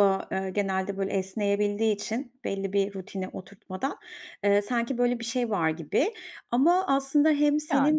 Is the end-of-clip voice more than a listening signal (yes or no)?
no